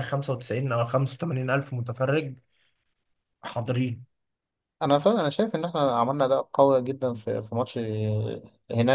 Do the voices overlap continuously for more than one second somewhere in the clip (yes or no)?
no